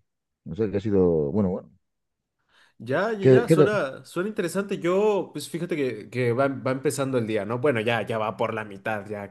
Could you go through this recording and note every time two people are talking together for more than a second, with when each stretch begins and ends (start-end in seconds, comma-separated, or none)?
none